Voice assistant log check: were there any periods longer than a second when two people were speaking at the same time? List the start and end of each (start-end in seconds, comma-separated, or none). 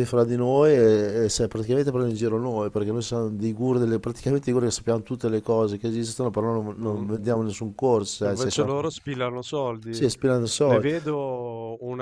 none